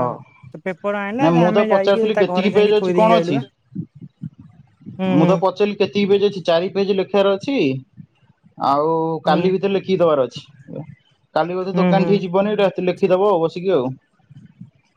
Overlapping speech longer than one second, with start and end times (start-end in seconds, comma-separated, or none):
1.2-3.4